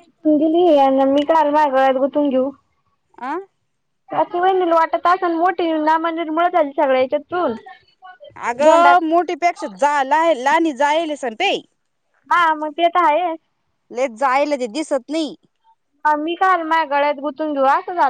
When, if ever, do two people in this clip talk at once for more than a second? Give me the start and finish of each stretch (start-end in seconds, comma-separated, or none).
none